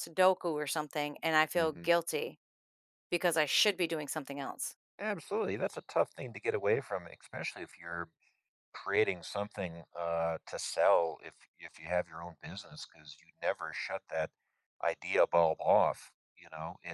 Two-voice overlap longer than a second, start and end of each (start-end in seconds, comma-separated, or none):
none